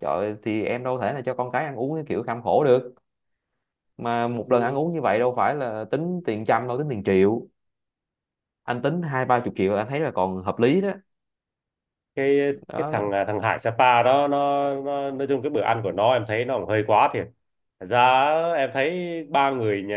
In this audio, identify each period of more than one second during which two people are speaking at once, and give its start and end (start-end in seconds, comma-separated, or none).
none